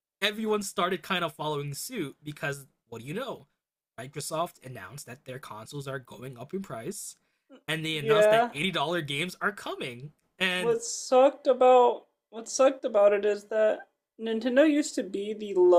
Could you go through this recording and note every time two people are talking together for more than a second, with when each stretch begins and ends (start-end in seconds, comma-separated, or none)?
none